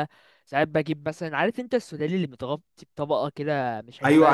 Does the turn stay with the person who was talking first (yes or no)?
no